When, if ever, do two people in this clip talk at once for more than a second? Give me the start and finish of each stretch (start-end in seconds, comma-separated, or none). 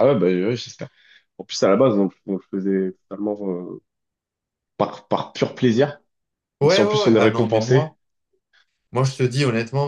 6.6-7.9